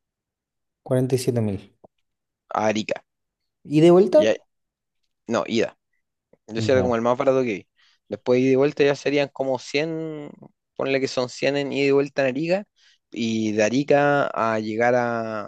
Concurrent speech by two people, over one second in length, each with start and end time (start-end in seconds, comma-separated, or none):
none